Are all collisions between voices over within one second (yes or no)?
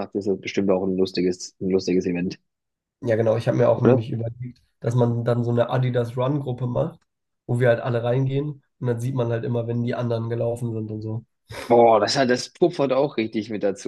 yes